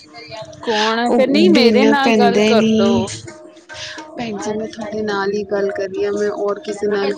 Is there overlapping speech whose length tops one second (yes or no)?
yes